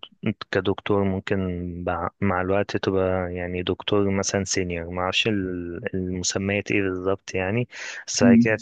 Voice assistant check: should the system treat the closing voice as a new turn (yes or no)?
no